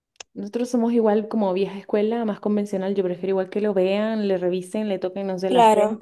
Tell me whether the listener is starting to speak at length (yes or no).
no